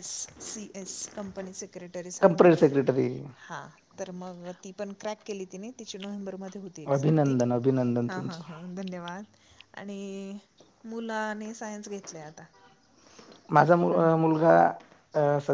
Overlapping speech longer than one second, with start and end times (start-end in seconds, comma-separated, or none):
none